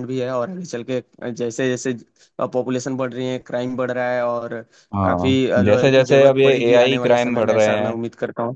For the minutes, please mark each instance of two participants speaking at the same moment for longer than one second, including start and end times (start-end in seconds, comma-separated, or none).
5.0-7.9